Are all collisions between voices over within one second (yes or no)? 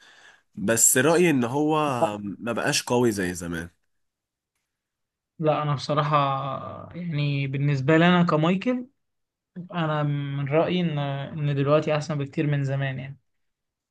yes